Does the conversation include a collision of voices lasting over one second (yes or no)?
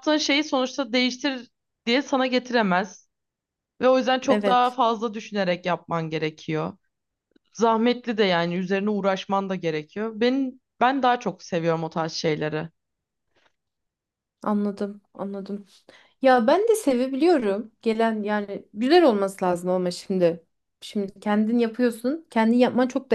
no